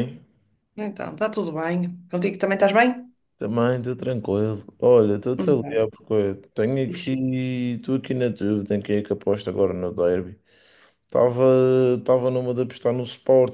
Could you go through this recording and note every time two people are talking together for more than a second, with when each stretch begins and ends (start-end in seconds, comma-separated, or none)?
none